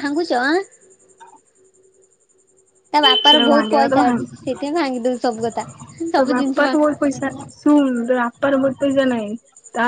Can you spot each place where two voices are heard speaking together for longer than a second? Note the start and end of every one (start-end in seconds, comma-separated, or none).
3.0-4.5